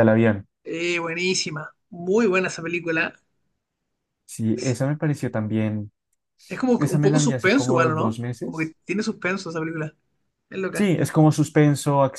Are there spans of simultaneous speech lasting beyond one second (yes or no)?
yes